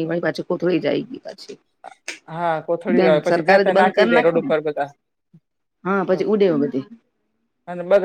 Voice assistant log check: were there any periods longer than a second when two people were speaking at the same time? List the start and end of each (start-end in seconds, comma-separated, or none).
2.9-4.5